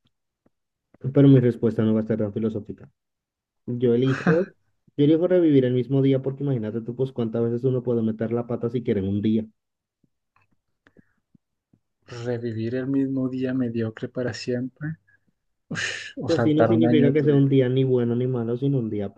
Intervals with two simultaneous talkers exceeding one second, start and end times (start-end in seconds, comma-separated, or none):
16.2-17.4